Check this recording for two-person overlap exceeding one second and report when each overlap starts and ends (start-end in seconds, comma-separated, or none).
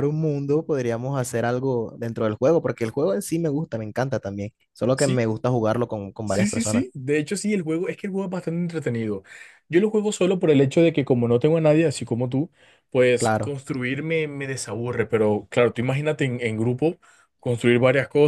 none